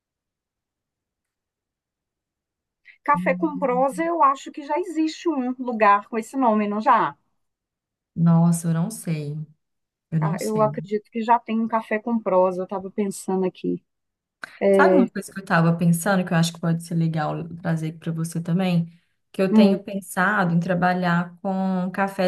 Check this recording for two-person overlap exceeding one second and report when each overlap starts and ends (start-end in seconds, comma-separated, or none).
none